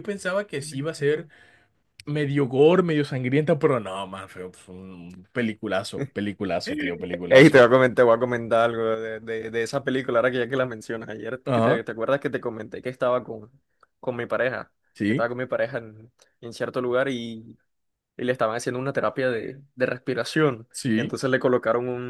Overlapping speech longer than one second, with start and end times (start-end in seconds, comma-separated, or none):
none